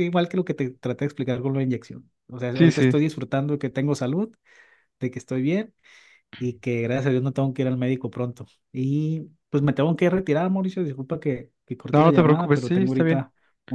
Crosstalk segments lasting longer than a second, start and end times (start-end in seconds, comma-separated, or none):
11.9-13.2